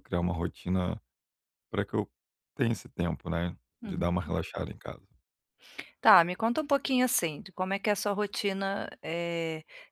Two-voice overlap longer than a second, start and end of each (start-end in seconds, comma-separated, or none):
none